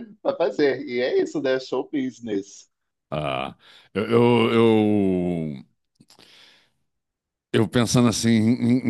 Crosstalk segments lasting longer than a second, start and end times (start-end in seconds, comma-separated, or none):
none